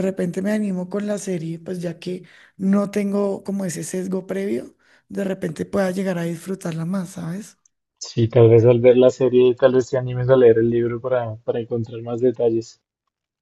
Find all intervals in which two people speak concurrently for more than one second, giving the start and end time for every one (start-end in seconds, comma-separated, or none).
none